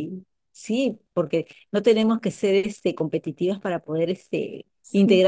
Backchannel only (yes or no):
yes